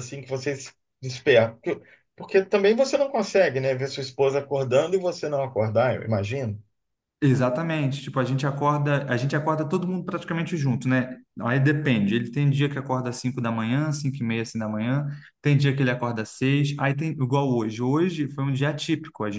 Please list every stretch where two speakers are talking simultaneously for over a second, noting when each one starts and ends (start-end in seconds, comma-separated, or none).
none